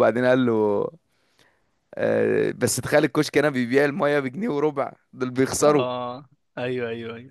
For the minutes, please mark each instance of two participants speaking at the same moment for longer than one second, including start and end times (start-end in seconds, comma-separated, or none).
none